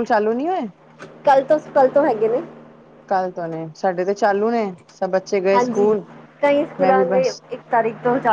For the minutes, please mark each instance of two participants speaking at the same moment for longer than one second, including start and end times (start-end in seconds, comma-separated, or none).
none